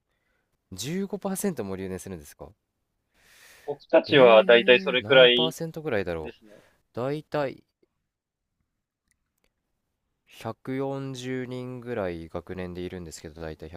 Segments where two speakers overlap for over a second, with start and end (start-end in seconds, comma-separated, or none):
4.1-5.6